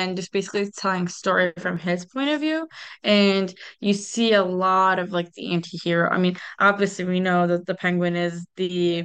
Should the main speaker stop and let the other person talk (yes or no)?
no